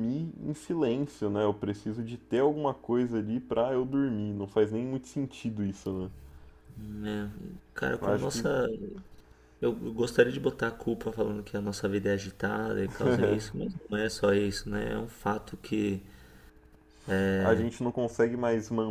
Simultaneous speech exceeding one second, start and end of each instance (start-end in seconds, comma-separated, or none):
none